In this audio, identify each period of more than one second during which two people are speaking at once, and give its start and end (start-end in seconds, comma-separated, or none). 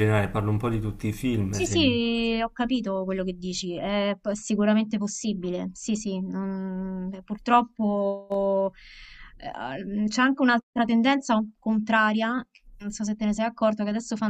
none